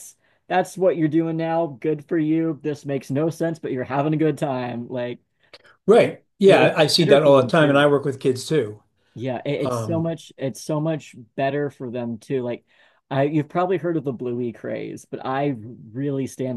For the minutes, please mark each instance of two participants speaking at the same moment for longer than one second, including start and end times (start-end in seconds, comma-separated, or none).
6.5-7.9